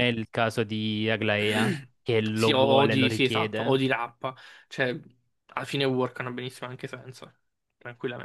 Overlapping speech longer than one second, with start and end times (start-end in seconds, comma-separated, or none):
2.3-3.8